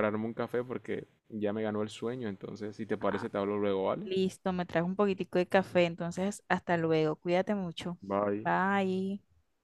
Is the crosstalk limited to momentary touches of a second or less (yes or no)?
yes